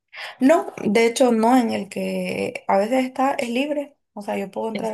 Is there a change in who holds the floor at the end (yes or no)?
no